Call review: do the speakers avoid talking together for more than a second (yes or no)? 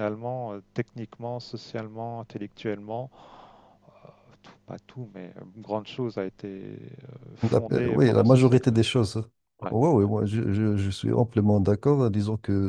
no